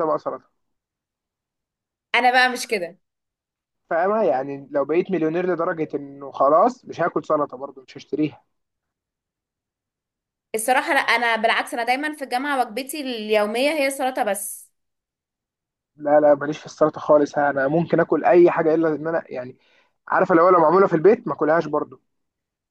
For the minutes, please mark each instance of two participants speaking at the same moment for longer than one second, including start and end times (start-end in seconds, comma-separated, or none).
none